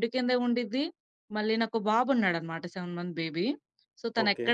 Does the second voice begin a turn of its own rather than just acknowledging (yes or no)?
no